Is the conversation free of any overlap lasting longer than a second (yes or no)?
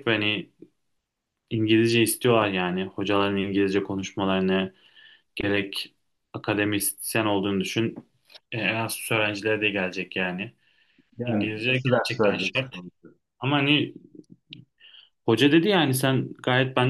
no